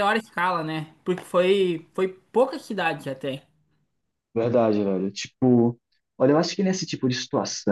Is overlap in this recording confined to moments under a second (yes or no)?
yes